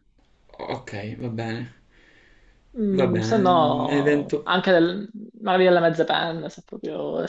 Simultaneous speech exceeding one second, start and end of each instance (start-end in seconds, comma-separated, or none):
3.0-4.5